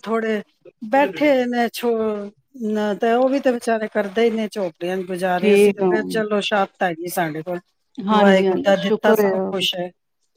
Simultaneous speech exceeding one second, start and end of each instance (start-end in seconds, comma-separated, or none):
8.1-9.5